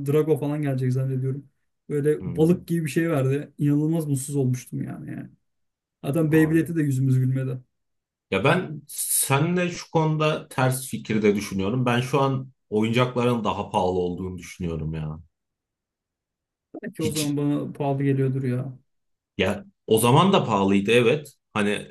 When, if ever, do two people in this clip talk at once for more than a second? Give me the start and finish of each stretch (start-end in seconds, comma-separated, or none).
none